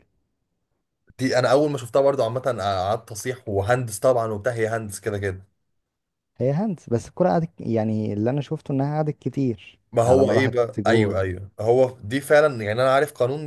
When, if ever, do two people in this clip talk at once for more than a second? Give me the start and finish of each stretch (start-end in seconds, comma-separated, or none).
9.9-11.2